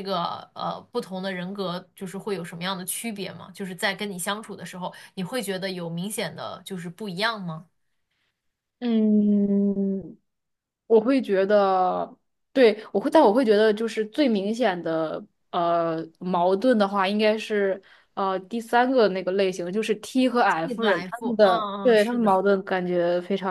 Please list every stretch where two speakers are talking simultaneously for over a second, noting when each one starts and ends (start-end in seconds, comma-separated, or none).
20.6-22.4